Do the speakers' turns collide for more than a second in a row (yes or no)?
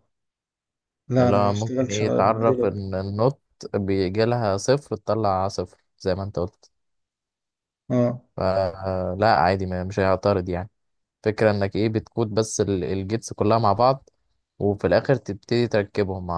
yes